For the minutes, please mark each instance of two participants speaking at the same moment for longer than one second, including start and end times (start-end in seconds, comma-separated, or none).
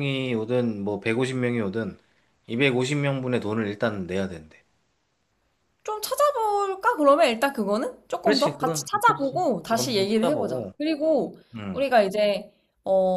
8.2-10.7